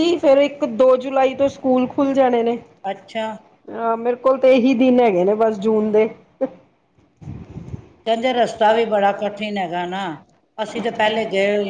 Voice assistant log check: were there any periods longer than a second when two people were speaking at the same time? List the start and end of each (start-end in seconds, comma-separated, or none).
none